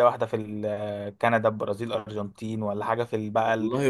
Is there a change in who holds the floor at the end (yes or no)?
no